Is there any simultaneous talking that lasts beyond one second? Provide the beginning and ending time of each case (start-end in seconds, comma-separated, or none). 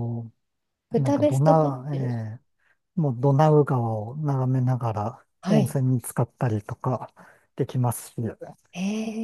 0.9-2.2